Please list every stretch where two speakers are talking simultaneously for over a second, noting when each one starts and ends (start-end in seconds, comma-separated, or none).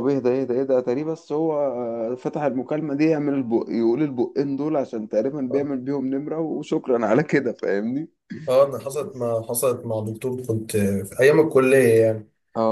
none